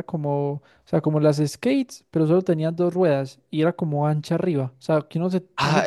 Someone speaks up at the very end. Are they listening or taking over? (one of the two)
taking over